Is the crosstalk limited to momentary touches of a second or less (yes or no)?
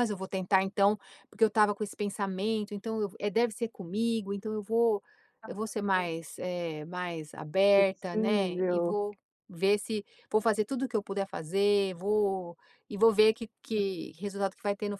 no